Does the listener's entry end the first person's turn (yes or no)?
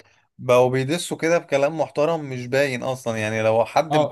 yes